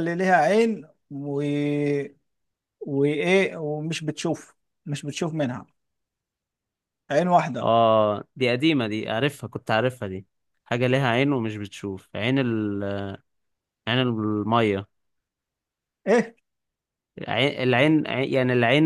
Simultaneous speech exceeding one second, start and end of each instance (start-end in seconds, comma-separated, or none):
none